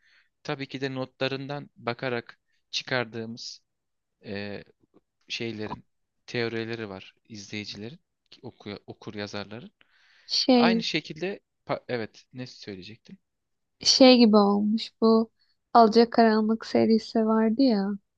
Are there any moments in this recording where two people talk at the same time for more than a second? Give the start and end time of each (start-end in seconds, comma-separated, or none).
none